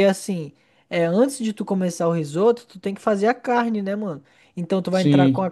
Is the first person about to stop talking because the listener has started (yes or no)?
no